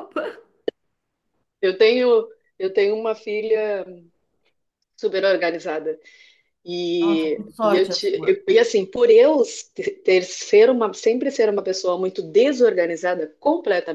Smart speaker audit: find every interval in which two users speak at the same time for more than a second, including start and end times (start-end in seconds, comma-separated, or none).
7.0-8.4